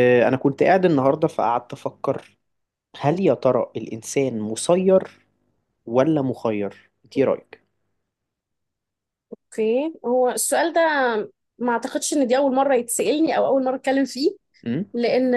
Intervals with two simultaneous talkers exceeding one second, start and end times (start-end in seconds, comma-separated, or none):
none